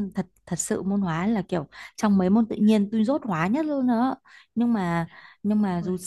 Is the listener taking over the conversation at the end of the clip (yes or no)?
no